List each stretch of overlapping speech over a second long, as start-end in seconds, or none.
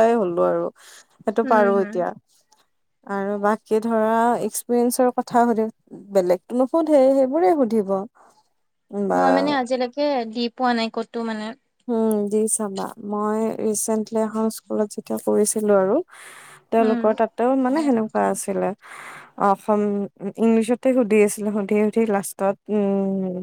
none